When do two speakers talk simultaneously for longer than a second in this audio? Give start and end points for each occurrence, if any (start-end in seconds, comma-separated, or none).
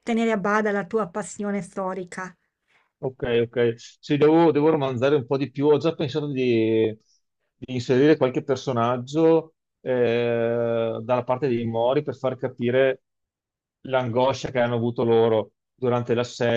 none